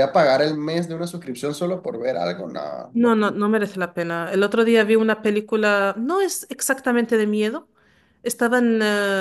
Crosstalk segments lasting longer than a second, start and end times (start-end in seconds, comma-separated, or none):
none